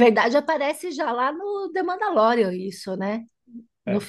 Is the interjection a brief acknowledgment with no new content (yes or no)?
yes